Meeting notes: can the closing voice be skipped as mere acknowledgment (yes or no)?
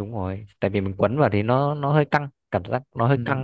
no